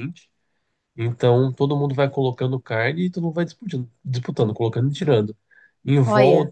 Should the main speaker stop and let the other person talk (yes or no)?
no